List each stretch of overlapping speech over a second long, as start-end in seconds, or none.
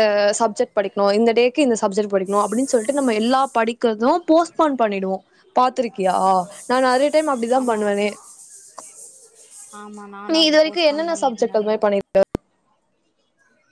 10.3-11.9